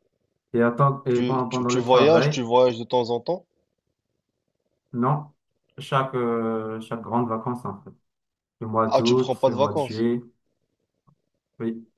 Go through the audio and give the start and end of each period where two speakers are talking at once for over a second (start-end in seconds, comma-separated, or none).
1.1-2.5, 8.9-10.1